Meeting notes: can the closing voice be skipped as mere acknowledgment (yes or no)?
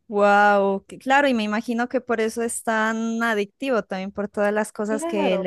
yes